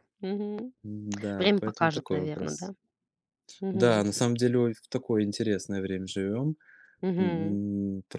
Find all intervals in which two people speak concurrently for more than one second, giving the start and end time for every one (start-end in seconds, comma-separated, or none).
1.4-2.7